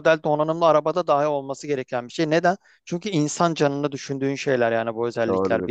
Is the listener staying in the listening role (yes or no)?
no